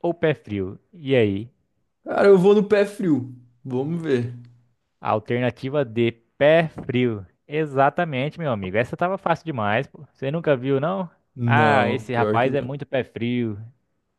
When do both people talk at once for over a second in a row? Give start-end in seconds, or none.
11.4-12.7